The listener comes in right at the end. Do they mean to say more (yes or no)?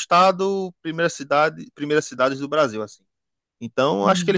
no